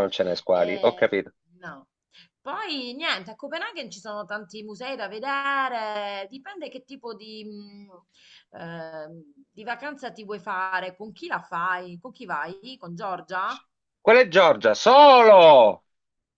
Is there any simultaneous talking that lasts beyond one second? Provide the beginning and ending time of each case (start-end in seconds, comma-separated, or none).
none